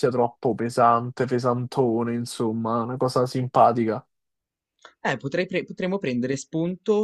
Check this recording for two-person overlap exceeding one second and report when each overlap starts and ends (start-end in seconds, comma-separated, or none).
none